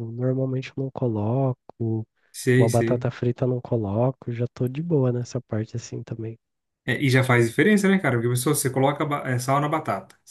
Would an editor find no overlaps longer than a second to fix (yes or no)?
yes